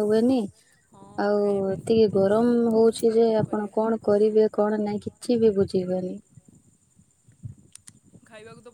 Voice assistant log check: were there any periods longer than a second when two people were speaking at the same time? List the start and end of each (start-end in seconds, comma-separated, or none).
1.2-3.7